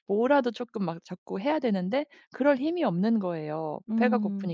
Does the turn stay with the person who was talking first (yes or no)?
yes